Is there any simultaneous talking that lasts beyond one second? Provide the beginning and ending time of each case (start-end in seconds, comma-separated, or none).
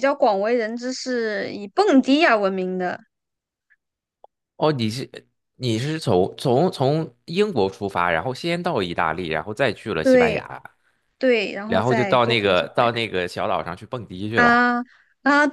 11.7-12.8